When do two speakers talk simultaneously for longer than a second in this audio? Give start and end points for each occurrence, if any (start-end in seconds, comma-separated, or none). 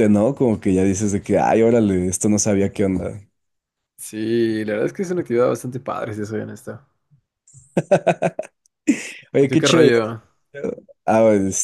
none